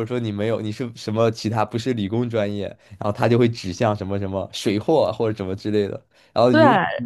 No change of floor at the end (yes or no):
yes